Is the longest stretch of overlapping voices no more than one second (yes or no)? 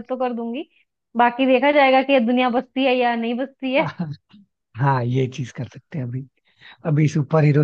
yes